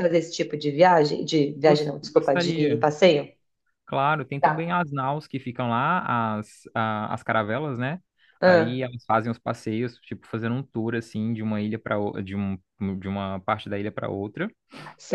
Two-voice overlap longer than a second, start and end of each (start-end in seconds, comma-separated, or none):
1.5-2.8